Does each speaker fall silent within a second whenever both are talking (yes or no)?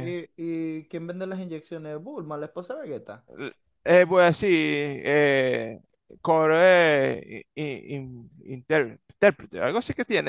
yes